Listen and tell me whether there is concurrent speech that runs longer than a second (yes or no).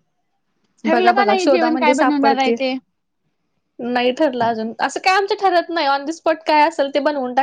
yes